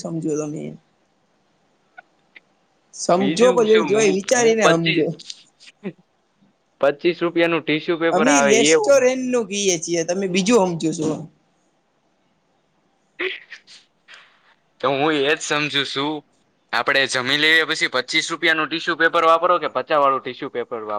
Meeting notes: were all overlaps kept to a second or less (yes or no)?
no